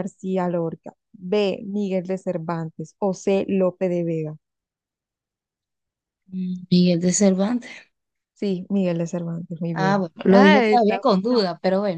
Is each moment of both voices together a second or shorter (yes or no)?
no